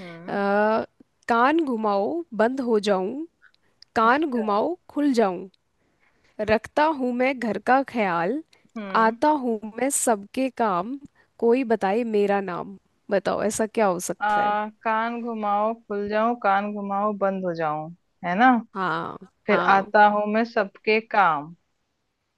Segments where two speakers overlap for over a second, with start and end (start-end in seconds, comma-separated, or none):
none